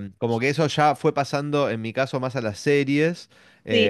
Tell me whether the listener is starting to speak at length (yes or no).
no